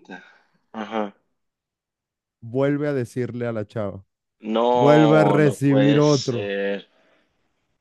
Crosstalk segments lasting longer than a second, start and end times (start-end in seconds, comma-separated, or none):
4.7-6.5